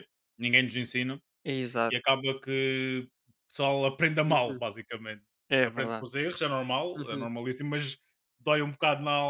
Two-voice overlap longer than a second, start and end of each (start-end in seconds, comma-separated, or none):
none